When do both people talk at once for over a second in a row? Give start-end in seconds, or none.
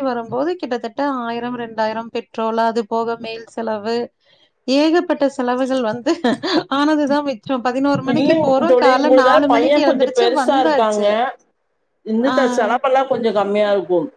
8.1-10.1